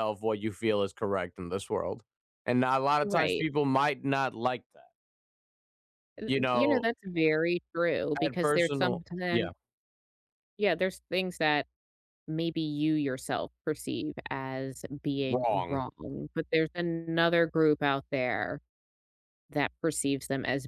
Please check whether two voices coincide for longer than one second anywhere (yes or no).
yes